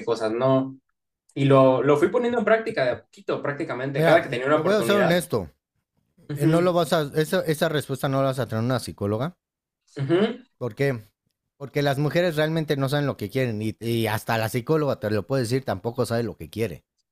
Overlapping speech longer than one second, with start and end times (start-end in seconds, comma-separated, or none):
3.9-5.2